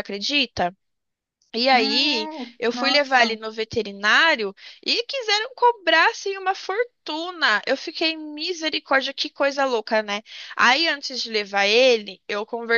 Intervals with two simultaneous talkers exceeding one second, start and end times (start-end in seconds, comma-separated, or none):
1.7-3.4